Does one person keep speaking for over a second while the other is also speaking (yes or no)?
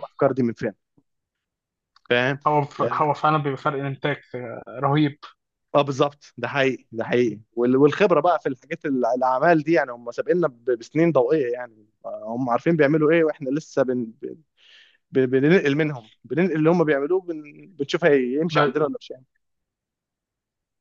no